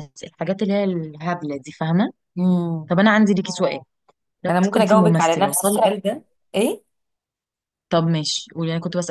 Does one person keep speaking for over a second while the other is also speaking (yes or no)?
yes